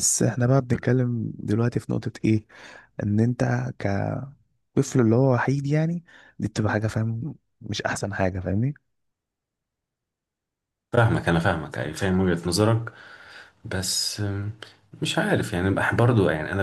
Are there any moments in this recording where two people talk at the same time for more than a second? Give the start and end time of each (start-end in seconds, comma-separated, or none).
none